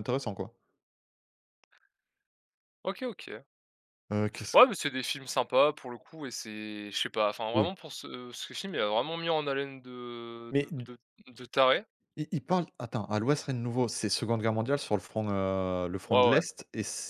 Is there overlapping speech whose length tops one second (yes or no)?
no